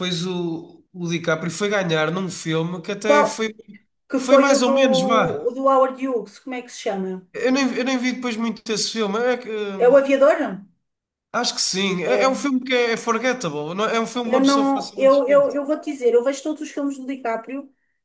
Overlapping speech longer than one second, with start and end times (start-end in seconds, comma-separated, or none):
14.2-15.6